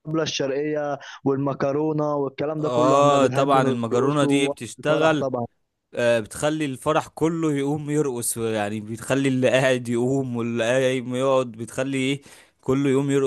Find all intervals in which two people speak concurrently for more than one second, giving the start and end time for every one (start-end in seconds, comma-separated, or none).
2.6-5.3